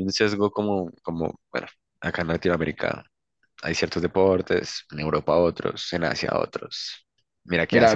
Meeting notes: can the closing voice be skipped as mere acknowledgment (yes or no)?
no